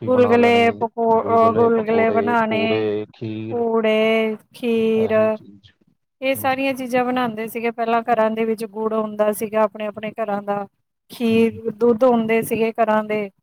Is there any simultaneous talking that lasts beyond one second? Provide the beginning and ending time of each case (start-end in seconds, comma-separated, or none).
none